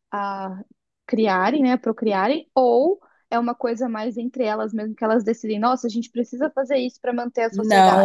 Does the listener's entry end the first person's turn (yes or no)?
yes